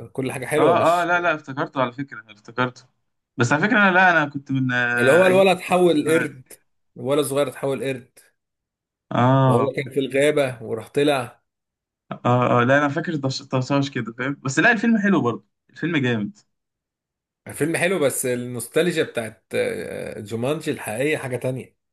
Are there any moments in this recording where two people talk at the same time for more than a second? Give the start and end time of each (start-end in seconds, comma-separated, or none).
5.0-6.3